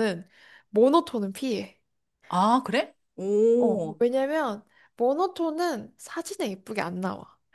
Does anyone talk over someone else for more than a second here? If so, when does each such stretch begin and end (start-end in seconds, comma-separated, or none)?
none